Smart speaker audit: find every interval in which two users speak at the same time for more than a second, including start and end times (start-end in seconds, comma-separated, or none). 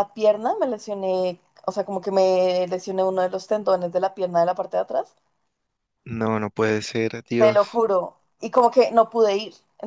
none